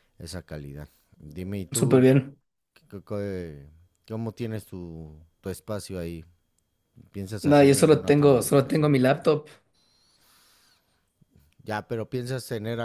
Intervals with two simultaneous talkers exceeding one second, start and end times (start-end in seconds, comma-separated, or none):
7.4-8.9